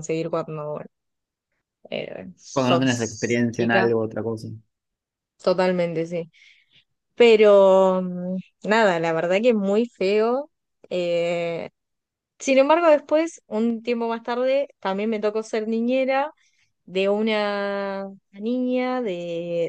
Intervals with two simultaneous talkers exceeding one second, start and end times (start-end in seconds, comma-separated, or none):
2.5-3.9